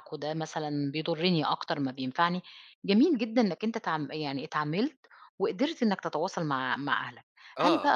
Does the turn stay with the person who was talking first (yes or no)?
yes